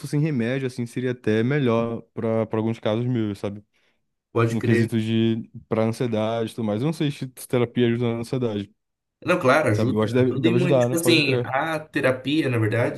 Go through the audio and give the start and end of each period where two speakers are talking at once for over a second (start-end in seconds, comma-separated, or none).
9.7-11.5